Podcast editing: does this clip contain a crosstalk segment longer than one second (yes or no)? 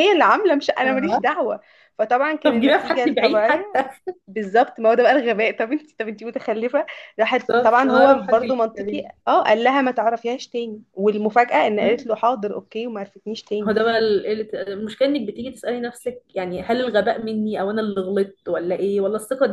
yes